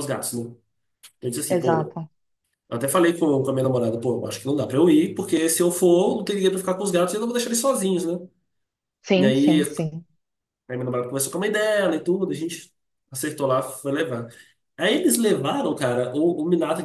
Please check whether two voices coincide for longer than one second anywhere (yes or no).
no